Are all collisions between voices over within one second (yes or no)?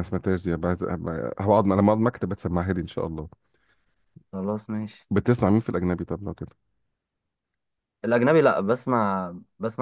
yes